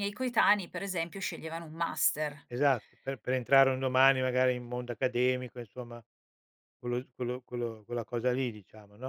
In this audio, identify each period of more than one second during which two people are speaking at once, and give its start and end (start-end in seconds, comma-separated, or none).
none